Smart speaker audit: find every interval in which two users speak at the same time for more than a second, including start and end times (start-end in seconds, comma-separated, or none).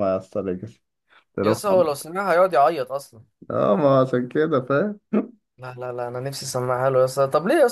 none